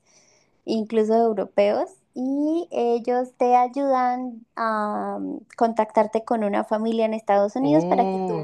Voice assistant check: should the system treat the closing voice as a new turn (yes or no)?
yes